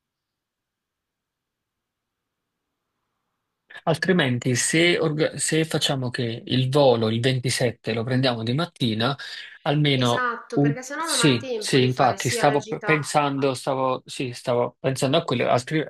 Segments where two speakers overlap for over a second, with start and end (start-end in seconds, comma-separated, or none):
9.9-13.0